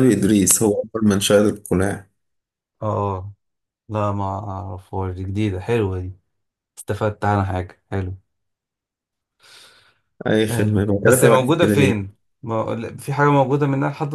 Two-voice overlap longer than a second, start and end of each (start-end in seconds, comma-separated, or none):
10.5-12.1